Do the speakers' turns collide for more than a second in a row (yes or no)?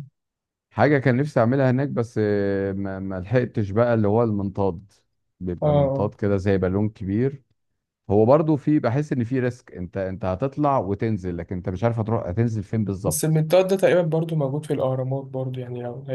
no